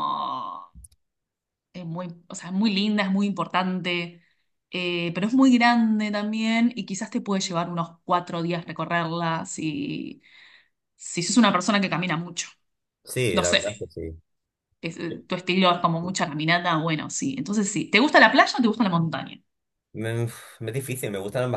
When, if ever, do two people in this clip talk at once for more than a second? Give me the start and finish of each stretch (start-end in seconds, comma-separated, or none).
none